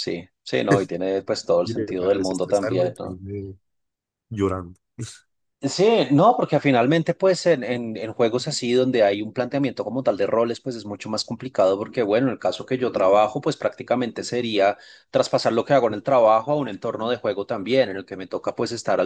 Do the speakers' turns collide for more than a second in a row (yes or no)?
yes